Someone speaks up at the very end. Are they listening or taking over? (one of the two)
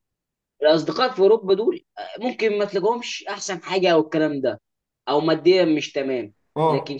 listening